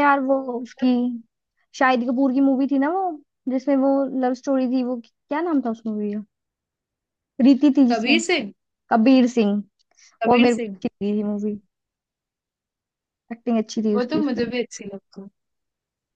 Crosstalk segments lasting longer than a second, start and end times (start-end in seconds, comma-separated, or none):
none